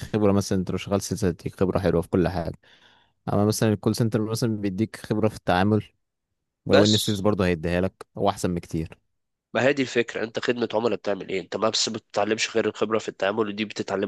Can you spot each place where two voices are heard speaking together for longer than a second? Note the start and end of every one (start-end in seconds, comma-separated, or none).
none